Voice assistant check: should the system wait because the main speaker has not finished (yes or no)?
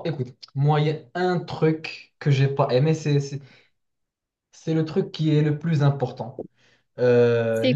yes